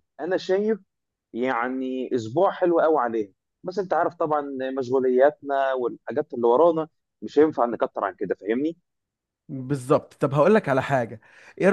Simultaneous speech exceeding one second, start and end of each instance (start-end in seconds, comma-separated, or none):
none